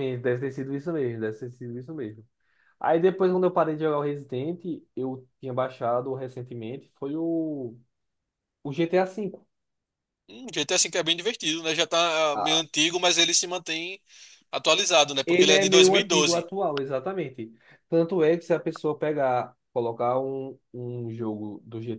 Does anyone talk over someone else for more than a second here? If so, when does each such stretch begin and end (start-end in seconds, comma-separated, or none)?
15.2-16.5